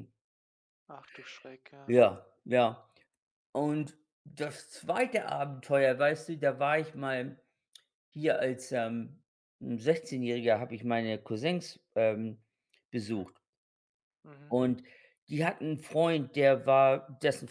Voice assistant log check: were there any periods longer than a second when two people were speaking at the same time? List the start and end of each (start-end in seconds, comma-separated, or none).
none